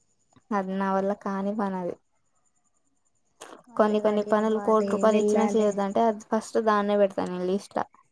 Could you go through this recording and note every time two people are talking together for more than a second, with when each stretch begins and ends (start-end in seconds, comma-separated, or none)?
3.8-5.7